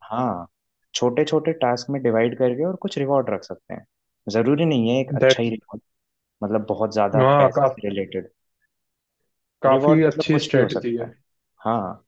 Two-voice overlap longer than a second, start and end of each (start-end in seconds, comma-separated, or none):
9.7-11.1